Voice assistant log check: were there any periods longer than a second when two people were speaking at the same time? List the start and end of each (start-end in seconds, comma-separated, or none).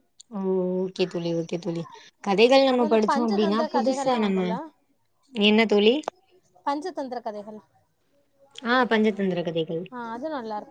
2.7-4.5